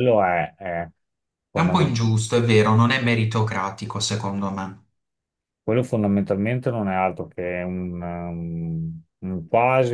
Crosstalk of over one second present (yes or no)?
no